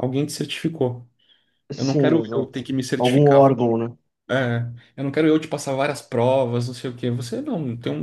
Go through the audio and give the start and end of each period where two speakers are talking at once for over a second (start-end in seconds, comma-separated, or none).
1.8-3.5